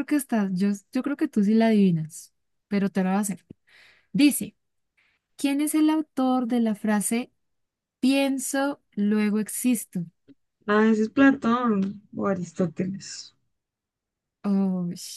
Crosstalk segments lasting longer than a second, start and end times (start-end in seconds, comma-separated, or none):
none